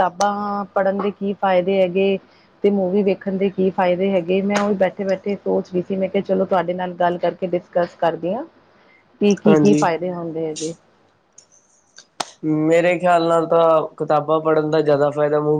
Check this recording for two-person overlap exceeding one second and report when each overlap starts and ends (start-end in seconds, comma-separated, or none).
none